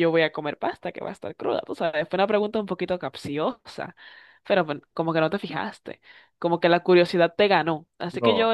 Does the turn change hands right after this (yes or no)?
no